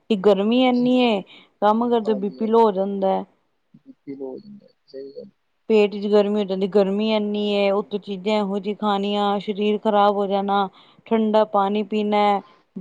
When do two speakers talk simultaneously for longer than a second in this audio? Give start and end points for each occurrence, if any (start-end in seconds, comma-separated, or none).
none